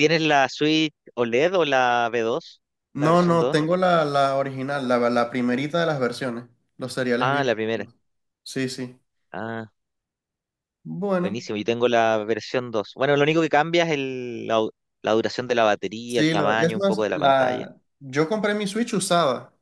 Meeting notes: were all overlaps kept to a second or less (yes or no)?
no